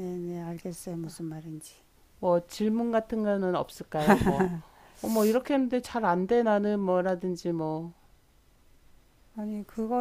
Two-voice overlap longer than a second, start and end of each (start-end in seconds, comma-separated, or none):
none